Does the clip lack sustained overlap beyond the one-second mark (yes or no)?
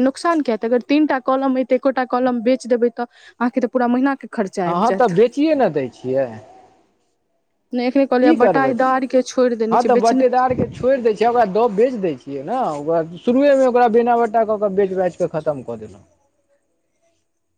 yes